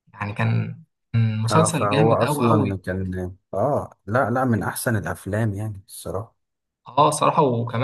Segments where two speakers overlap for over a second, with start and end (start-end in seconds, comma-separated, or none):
1.5-2.8